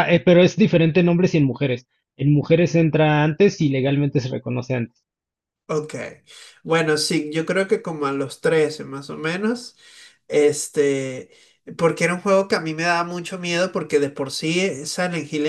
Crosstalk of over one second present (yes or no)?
no